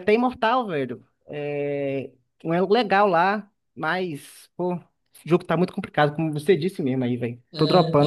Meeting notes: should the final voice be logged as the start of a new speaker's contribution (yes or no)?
yes